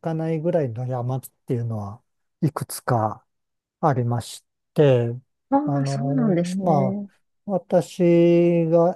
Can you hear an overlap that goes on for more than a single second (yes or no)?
yes